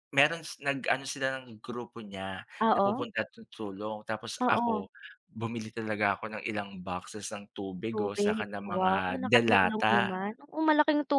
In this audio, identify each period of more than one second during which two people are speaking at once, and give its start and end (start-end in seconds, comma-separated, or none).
7.9-10.1